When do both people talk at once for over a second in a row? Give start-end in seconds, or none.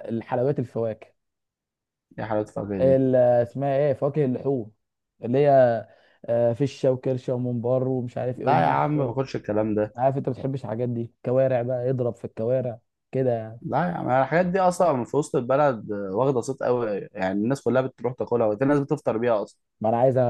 none